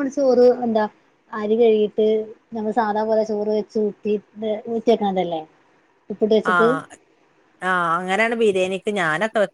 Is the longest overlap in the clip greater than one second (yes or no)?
no